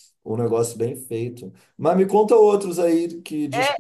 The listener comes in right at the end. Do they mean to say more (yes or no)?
yes